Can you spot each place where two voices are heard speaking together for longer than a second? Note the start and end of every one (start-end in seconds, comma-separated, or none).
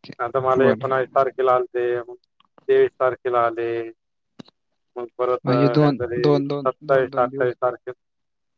5.5-7.5